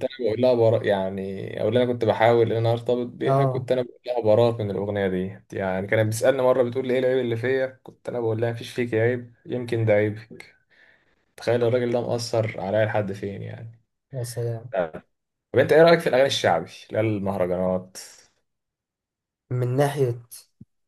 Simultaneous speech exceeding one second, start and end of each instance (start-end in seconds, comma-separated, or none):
none